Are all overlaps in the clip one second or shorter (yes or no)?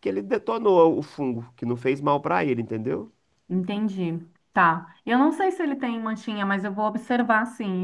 yes